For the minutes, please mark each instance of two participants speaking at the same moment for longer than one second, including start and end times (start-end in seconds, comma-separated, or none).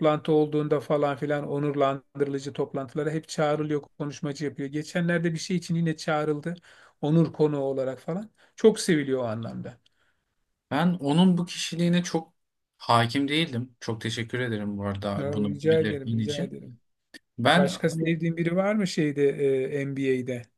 15.2-16.6